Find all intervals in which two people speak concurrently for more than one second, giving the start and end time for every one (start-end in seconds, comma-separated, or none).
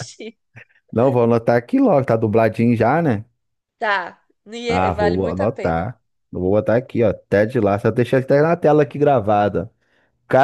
4.7-5.9